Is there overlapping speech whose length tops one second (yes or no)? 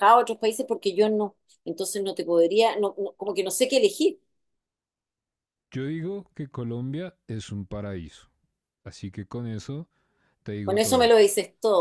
no